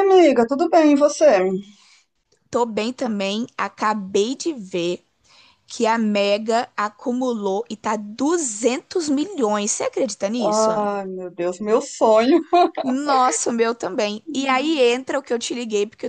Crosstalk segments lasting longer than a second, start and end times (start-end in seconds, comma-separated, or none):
none